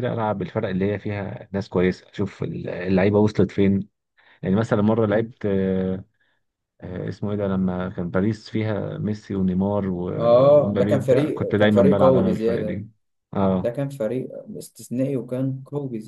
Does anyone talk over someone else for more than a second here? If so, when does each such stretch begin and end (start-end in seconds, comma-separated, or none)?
10.2-12.8